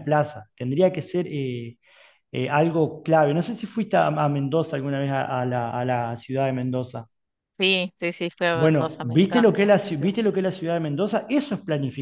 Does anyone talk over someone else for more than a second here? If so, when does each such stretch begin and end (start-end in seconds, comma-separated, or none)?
8.5-10.2